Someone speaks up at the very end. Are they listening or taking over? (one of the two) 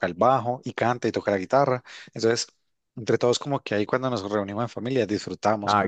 taking over